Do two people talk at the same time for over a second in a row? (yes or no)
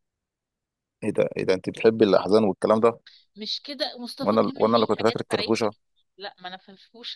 yes